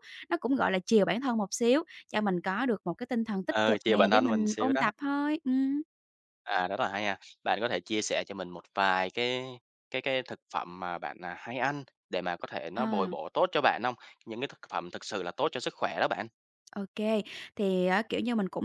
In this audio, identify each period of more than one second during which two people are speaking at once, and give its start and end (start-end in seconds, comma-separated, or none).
3.5-4.8